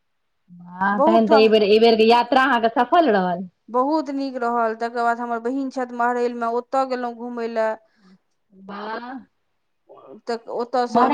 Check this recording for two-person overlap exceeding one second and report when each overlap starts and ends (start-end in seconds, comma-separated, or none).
none